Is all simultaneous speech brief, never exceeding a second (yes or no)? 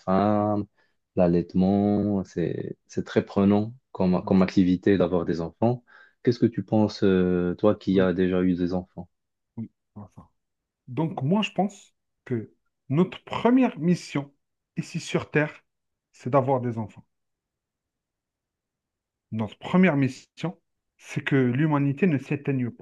yes